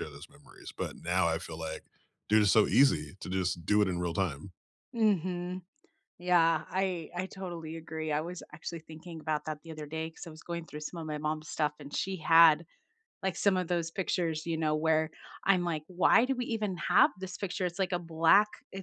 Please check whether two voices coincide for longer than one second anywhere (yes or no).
no